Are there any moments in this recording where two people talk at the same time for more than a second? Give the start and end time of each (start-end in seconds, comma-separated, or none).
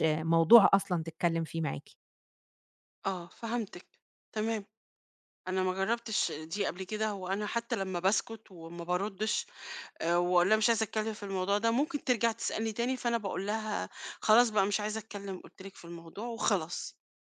none